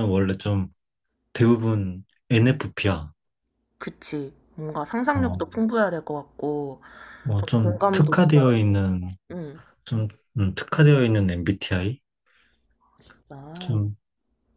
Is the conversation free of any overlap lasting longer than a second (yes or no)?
no